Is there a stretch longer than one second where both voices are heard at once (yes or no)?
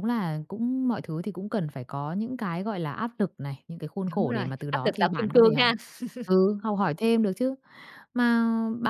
yes